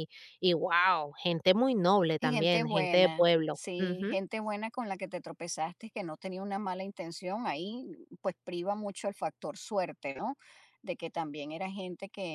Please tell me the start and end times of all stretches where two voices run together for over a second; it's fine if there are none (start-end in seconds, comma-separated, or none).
2.2-4.2